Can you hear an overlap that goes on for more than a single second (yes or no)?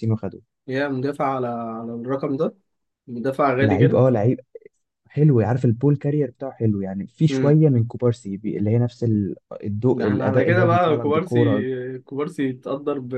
yes